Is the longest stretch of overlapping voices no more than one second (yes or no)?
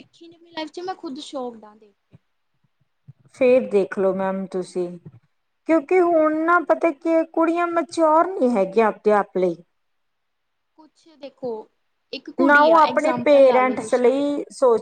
no